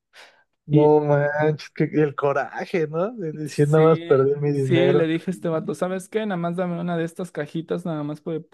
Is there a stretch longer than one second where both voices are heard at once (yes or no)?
yes